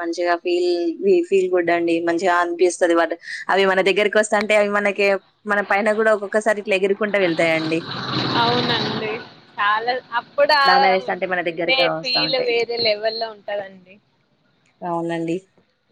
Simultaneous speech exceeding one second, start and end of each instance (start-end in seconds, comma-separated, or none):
10.7-12.5